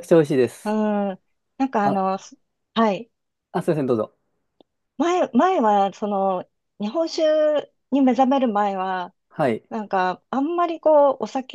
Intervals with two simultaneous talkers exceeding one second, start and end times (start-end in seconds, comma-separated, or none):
none